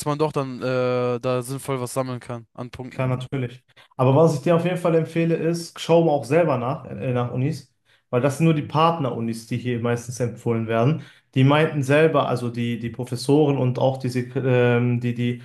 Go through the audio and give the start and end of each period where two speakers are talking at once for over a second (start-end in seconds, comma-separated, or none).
none